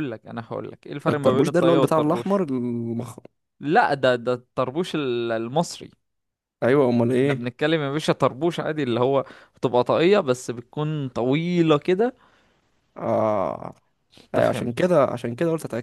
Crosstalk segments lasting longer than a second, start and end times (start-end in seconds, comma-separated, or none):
1.1-2.4